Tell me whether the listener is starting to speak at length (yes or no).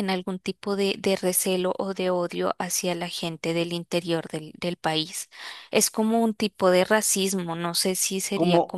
yes